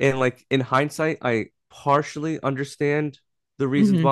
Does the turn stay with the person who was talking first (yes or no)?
yes